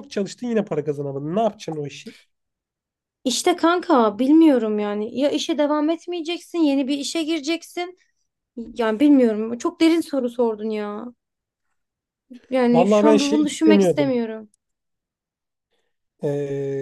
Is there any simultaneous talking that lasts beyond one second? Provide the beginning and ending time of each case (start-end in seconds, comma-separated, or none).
12.7-14.2